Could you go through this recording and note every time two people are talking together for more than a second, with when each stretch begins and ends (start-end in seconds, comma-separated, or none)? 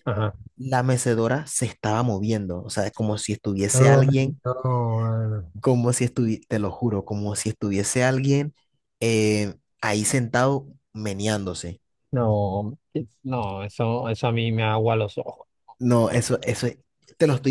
none